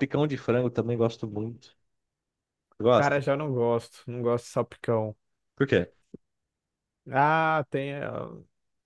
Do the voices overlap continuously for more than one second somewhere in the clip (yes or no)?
no